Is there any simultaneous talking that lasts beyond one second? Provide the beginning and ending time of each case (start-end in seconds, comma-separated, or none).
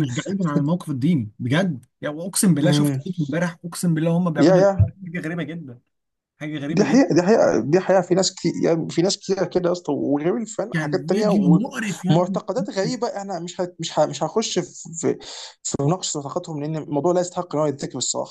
none